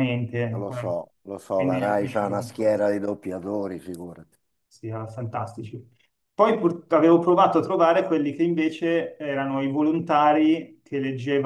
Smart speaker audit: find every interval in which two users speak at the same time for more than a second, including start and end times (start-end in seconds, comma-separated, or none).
1.6-2.9